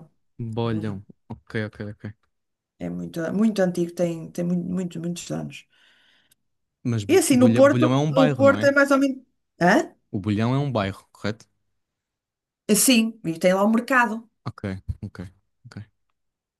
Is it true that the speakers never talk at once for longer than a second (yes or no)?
no